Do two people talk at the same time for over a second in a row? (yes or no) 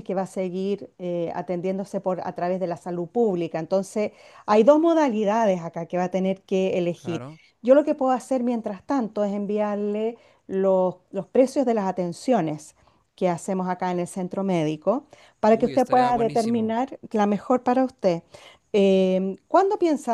yes